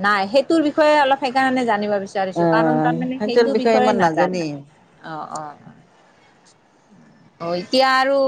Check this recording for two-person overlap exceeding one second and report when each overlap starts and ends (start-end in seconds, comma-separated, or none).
2.4-4.4